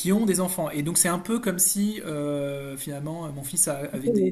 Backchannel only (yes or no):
no